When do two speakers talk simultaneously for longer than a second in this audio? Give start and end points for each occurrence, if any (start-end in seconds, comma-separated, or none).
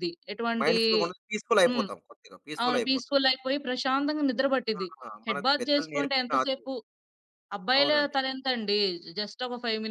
5.3-6.7